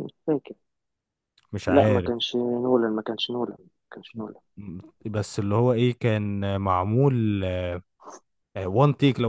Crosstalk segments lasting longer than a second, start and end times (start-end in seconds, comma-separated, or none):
none